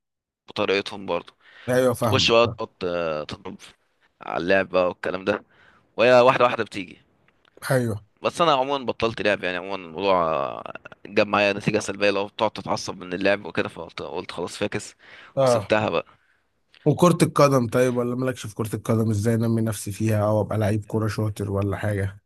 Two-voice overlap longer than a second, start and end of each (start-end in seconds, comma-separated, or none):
none